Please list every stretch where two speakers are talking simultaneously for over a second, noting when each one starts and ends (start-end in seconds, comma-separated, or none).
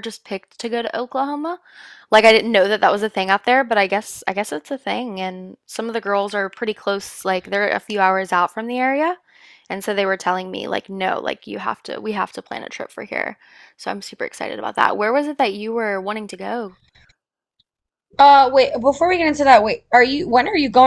none